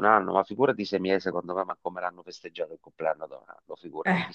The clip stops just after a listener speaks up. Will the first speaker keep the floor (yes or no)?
yes